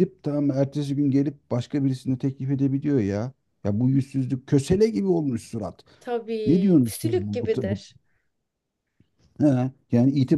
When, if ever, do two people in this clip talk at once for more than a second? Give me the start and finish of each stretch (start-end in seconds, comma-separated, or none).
6.4-7.8